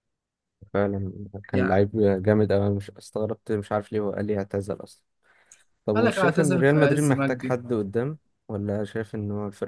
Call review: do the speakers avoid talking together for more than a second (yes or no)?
no